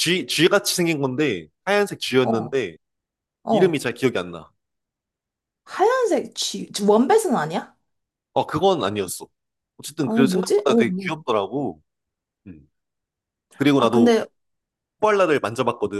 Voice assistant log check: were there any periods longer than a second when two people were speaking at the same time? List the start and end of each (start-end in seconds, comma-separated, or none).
10.0-11.2